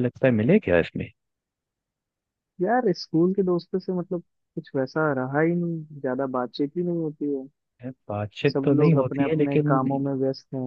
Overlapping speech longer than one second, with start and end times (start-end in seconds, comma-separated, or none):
8.5-9.8